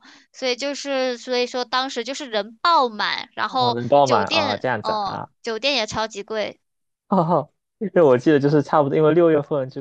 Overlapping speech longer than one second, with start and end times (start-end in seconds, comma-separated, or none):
3.5-5.3